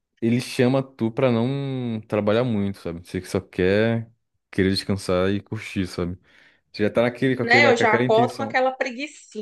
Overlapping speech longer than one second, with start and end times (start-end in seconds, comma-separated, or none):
7.4-8.6